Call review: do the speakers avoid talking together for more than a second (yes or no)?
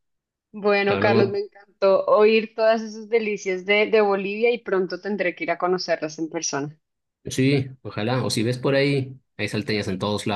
yes